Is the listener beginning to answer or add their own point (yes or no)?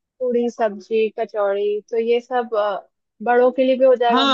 yes